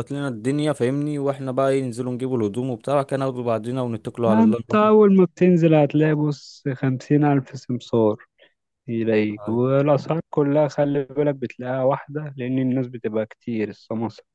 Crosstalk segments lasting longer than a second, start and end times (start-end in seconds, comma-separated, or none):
none